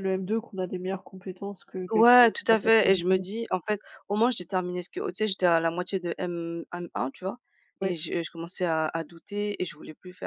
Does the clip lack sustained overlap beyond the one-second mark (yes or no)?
no